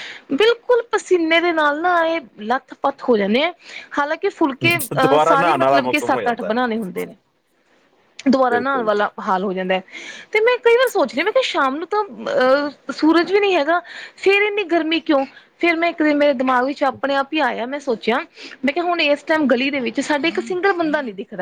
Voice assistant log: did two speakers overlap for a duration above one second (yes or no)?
yes